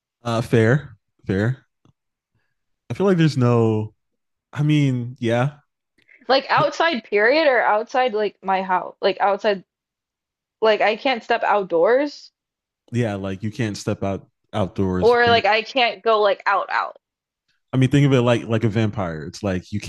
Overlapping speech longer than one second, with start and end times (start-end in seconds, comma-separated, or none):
none